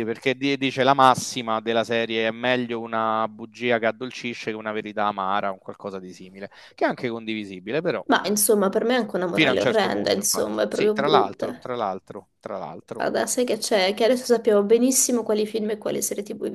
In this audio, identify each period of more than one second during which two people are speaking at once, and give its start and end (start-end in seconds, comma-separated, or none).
9.3-11.6